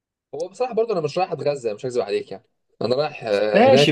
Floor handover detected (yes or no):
yes